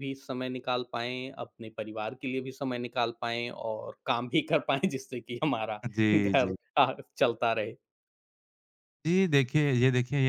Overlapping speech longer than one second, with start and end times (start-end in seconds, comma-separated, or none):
none